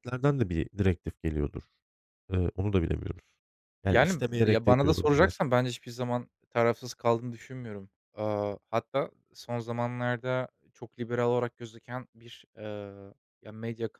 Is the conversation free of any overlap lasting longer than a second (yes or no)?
no